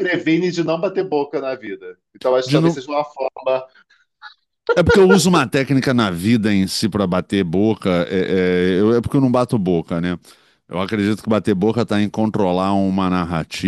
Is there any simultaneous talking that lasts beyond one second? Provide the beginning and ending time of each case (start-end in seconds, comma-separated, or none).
none